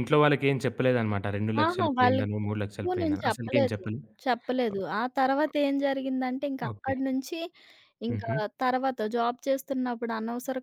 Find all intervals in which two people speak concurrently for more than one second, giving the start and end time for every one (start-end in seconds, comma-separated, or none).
1.6-3.8